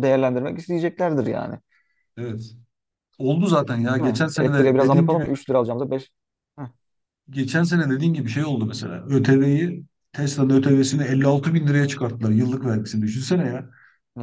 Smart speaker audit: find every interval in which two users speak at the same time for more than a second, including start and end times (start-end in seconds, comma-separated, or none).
4.0-5.3